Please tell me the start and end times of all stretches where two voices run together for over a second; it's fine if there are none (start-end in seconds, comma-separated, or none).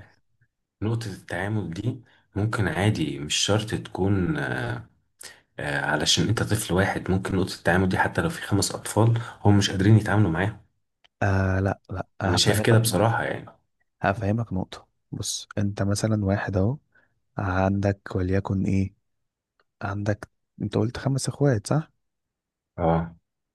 none